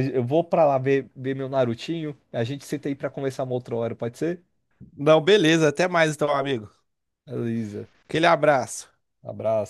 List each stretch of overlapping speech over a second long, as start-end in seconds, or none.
none